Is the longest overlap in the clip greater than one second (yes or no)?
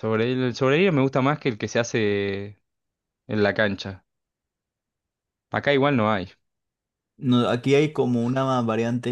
no